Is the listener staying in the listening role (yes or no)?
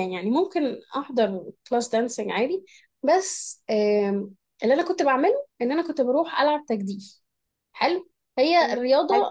yes